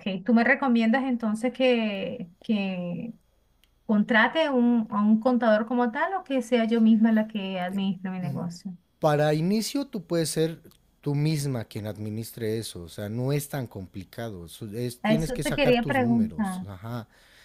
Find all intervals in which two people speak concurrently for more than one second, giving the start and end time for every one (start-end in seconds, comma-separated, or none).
15.0-16.7